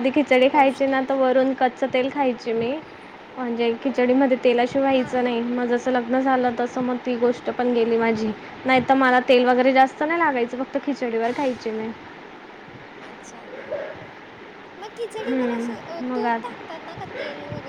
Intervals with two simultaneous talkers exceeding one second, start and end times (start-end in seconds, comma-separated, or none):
15.3-16.5